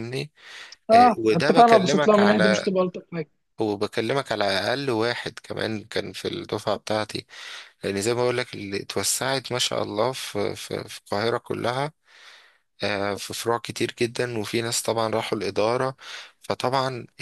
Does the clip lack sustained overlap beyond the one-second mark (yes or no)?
no